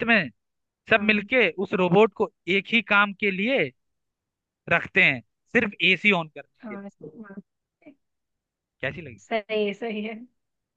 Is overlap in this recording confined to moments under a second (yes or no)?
yes